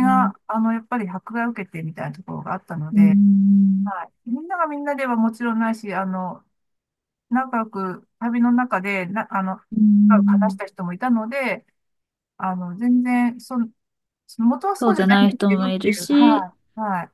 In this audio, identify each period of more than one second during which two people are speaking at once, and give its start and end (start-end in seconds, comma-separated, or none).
14.8-16.5